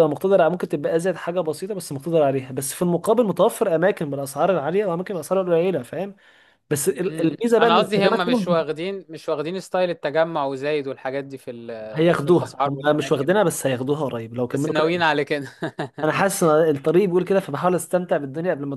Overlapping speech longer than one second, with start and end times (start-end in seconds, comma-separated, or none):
7.1-8.6, 11.9-13.5